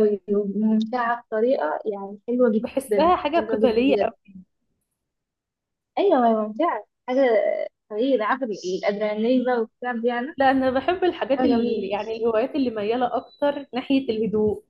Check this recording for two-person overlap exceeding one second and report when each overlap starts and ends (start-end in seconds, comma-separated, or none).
2.6-4.0